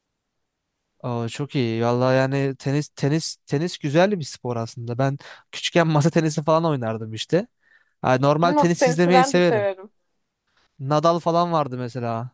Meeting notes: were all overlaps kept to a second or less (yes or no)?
no